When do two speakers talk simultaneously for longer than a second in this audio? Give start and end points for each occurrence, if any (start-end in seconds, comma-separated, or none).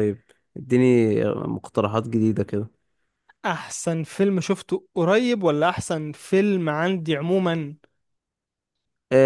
none